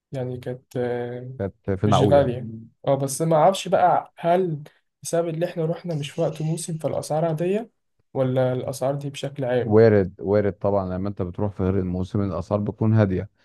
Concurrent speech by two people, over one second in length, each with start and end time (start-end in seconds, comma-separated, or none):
none